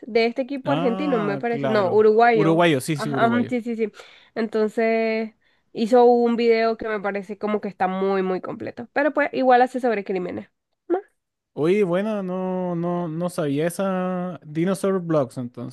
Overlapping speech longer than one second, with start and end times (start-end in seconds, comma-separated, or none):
0.6-3.5